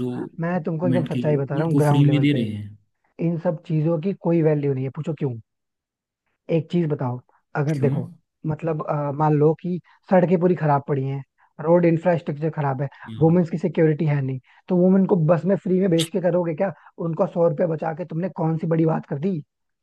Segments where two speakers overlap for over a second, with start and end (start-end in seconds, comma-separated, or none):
0.6-2.5